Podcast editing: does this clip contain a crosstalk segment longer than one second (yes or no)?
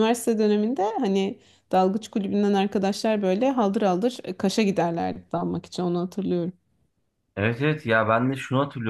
no